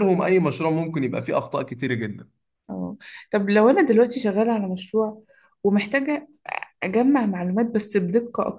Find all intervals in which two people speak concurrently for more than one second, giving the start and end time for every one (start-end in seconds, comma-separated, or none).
none